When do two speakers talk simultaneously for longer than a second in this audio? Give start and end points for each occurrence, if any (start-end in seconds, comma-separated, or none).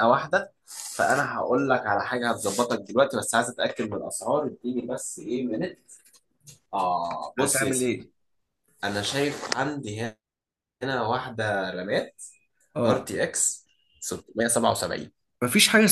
none